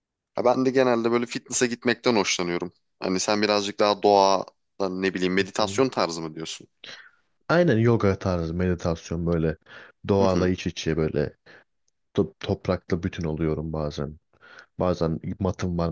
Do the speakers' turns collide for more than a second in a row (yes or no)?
no